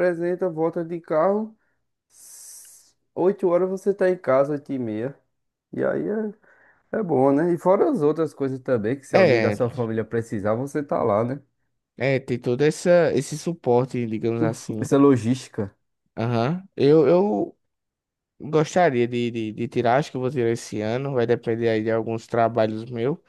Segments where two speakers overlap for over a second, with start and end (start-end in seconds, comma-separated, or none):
none